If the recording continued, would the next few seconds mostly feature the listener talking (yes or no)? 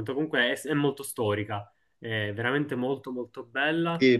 yes